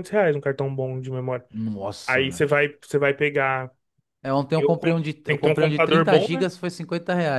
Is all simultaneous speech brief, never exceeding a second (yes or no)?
no